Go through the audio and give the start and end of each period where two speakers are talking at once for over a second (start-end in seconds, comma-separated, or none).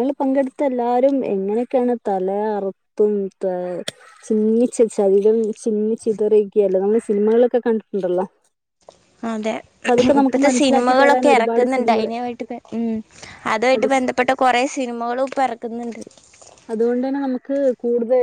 10.2-12.1